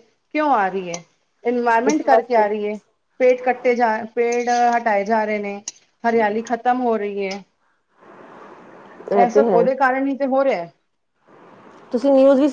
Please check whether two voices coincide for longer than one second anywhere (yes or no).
no